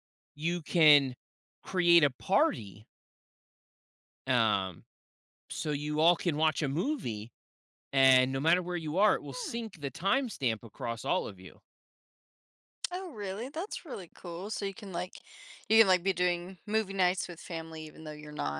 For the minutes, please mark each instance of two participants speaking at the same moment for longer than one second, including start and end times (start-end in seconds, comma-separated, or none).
none